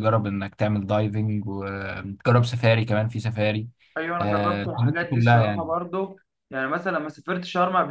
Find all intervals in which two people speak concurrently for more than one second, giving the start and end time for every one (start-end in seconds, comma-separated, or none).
4.2-5.7